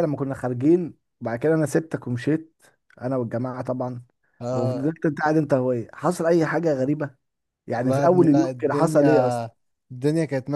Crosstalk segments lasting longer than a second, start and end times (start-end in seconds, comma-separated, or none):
7.8-9.5